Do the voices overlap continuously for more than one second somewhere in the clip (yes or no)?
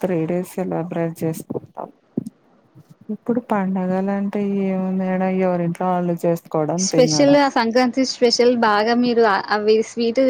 no